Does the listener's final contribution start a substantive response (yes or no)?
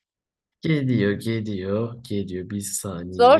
yes